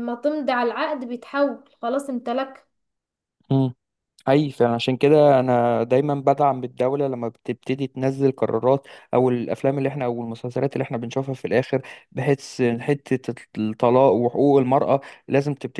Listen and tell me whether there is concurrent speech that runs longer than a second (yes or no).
no